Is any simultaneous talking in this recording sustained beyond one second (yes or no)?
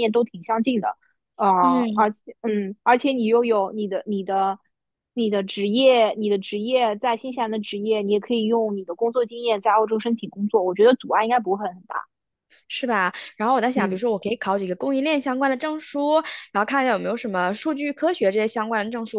no